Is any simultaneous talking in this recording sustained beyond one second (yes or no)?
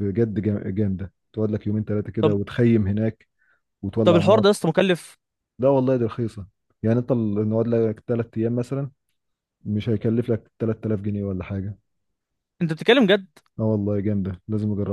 no